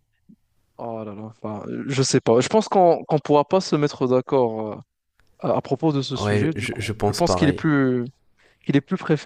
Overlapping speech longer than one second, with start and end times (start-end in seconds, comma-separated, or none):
6.2-7.7